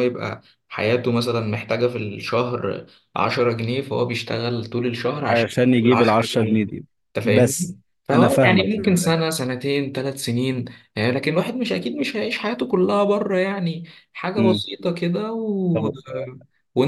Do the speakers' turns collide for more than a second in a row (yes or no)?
yes